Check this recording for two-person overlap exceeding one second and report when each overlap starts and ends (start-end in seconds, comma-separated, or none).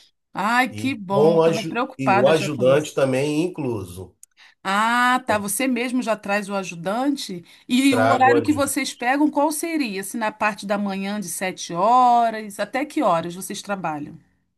0.7-3.0